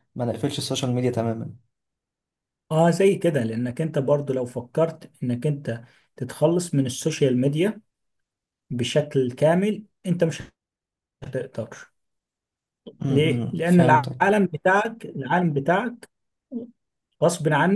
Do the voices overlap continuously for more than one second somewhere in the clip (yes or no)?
yes